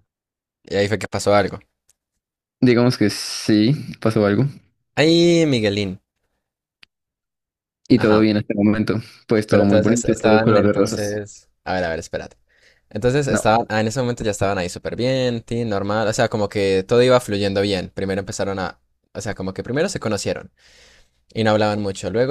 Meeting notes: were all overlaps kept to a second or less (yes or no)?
no